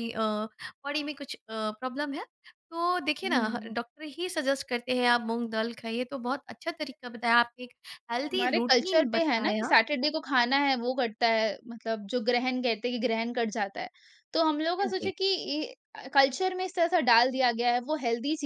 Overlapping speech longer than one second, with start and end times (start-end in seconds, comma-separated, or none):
8.3-9.7